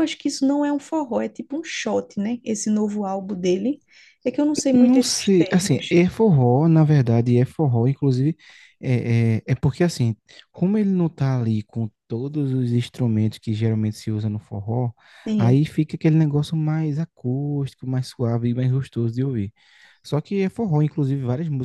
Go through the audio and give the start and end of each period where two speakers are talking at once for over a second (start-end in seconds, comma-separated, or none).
4.7-6.0